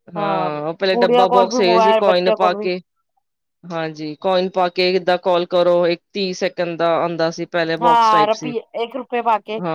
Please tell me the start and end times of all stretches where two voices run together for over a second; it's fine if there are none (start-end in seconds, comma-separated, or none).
0.9-2.7